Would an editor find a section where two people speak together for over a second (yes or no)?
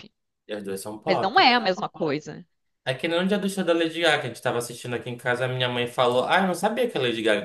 no